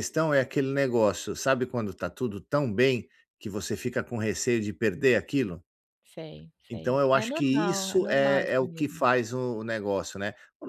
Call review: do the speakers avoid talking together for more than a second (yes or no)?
no